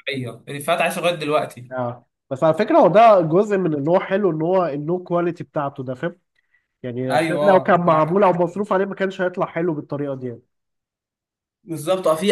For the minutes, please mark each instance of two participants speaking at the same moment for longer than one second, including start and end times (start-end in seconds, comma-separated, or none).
7.1-8.4